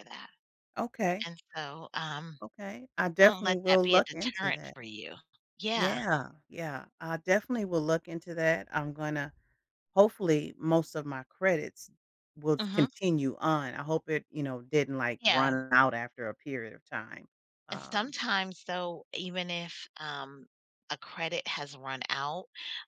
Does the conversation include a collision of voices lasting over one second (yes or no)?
yes